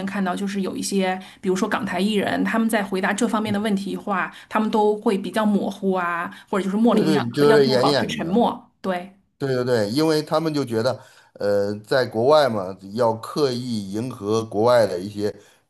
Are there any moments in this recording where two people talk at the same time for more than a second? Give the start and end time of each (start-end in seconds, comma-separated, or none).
6.9-8.5